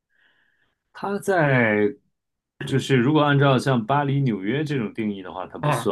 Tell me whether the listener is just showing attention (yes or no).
yes